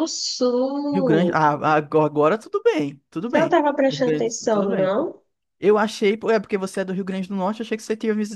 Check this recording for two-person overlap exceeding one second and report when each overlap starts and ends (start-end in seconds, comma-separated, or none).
3.3-4.9